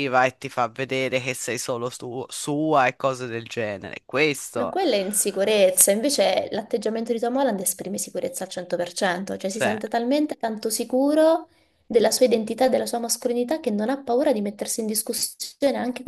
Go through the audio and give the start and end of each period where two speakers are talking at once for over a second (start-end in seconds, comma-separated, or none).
none